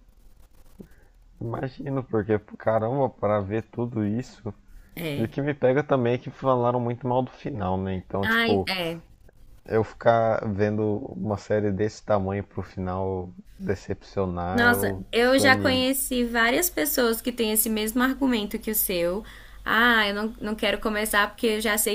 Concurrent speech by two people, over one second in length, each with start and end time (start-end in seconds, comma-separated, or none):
14.5-15.9